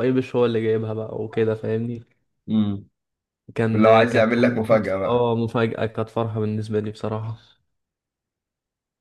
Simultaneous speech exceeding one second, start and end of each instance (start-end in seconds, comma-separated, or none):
3.7-5.3